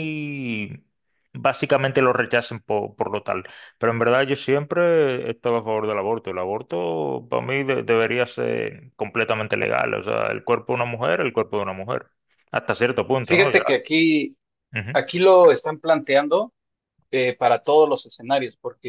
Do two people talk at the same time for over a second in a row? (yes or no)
no